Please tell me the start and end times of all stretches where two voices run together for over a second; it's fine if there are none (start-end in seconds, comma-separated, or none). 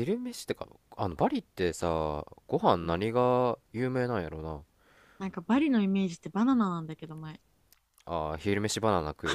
none